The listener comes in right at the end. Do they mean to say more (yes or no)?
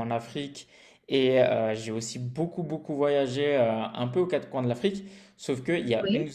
no